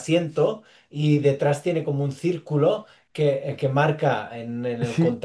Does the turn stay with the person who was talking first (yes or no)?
no